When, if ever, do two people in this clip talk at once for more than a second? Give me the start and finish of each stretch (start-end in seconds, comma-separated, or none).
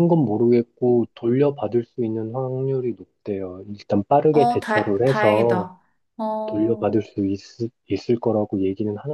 4.3-5.7